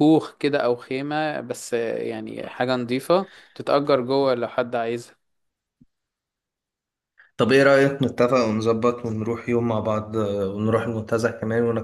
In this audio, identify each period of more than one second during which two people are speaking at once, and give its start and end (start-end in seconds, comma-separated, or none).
none